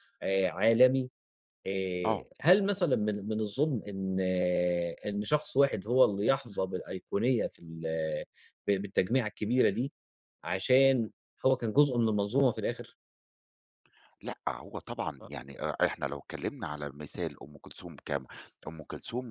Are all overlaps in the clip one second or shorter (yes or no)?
yes